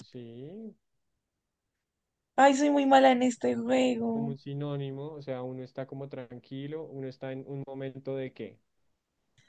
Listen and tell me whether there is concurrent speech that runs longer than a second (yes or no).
no